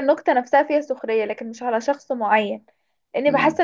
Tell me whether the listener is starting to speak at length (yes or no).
no